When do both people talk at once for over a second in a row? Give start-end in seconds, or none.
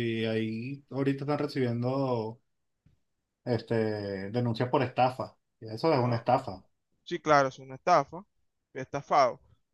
none